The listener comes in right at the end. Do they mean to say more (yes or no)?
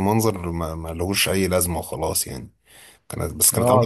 yes